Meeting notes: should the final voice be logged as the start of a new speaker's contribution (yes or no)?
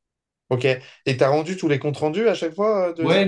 yes